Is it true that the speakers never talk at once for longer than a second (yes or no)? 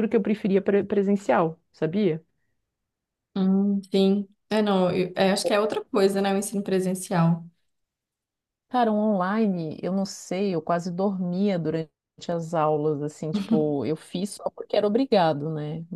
yes